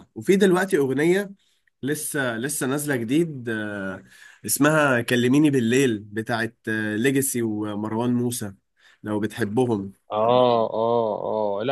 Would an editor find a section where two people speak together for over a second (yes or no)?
no